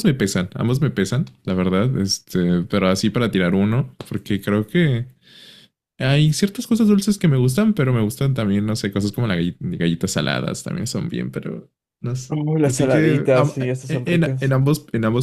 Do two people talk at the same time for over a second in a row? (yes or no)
yes